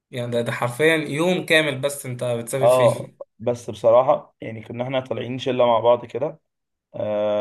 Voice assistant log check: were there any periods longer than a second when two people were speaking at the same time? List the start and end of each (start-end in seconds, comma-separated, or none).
none